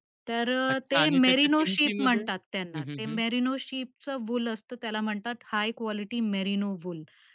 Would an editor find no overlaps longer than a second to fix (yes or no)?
no